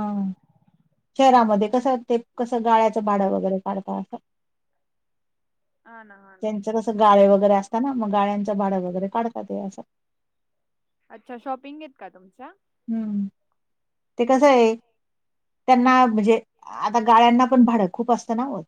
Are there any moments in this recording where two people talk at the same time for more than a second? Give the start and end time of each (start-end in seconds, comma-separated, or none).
none